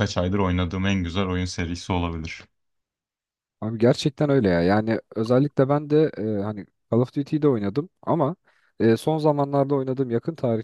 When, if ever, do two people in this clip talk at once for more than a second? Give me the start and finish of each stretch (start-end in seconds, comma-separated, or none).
none